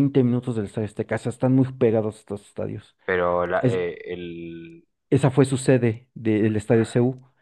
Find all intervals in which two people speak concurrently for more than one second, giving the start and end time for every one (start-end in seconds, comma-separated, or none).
none